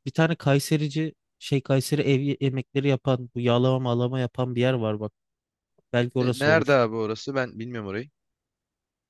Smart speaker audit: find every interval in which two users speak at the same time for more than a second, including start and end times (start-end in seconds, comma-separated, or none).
none